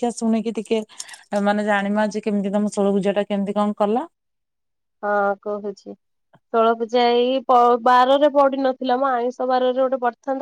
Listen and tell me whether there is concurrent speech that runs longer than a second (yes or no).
no